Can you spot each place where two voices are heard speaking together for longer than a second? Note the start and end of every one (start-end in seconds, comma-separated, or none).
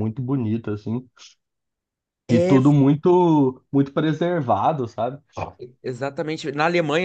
none